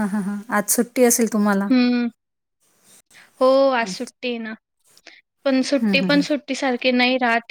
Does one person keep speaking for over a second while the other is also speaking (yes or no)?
no